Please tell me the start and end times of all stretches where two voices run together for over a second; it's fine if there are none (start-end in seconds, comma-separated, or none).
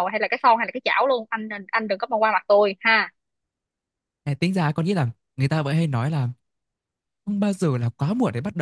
none